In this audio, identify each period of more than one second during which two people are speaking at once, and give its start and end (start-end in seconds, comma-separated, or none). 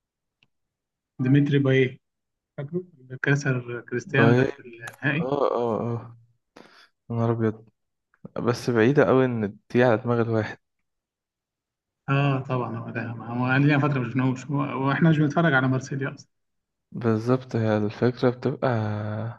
none